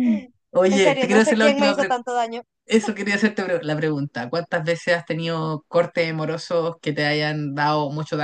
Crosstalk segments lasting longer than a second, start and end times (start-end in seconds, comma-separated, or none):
0.7-2.0